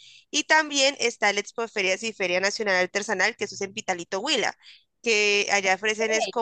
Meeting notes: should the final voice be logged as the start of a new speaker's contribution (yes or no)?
no